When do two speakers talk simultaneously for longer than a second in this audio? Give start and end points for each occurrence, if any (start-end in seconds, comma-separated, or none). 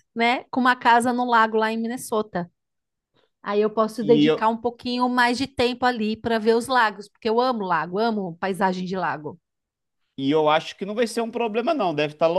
none